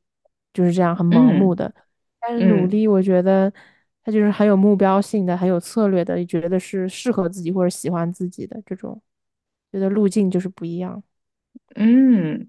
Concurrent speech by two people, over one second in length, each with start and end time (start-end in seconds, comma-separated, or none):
none